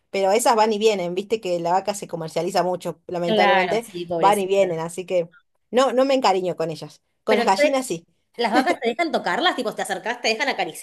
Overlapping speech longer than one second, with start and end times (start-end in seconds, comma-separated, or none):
3.2-4.7